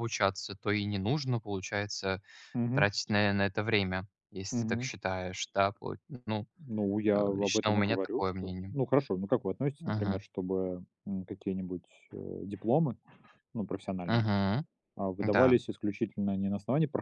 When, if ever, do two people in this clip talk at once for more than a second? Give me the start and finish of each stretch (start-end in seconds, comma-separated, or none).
7.1-8.7